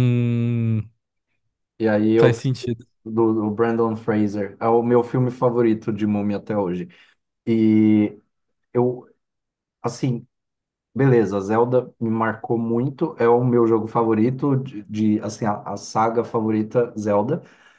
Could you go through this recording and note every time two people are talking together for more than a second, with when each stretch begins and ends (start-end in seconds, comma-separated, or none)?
none